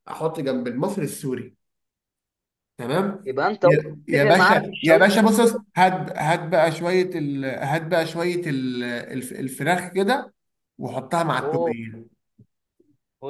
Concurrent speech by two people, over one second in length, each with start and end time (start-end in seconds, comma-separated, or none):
3.2-5.1